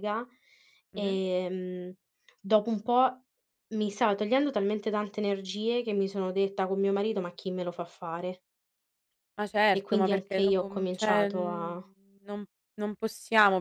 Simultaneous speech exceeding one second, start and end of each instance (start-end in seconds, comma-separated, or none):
9.7-11.9